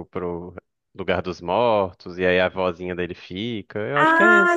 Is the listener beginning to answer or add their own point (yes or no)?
yes